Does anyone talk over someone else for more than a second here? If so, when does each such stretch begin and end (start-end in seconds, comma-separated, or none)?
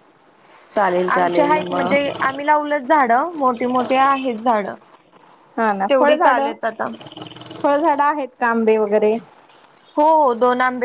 none